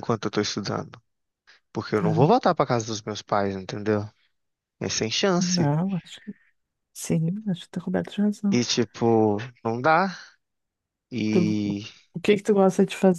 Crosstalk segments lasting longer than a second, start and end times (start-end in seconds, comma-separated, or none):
none